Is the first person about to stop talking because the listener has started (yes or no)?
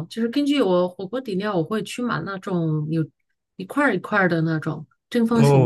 yes